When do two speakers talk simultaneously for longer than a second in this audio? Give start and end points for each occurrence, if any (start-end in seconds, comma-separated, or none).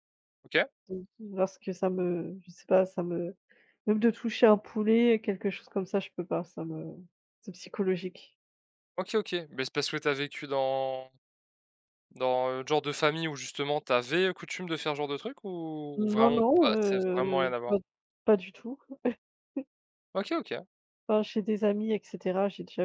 15.9-17.8